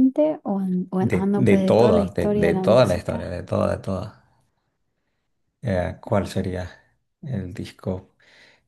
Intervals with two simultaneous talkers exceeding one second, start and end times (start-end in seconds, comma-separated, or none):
1.1-3.3